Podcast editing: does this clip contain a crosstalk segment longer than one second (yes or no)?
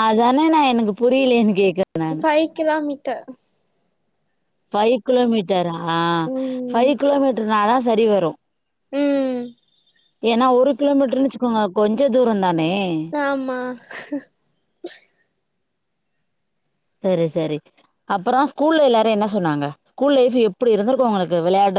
no